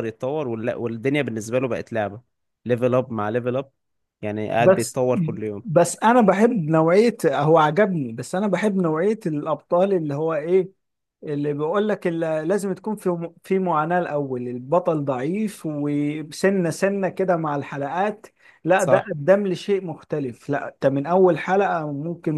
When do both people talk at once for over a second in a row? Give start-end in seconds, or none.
none